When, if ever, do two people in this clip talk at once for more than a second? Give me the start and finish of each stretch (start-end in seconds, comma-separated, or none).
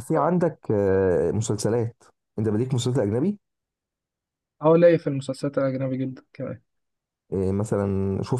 none